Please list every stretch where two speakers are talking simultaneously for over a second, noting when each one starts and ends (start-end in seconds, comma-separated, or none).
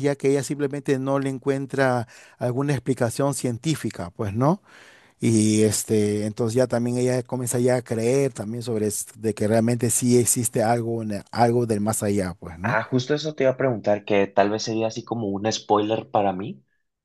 none